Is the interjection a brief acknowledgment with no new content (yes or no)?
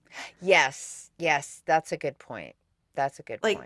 no